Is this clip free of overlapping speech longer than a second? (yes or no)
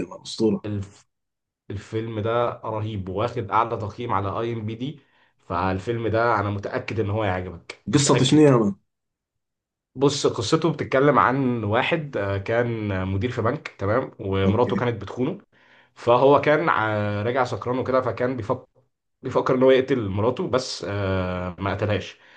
yes